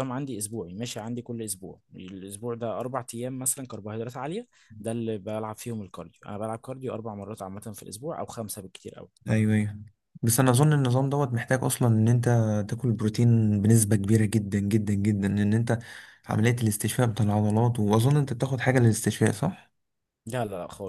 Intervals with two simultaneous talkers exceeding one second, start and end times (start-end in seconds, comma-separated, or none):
none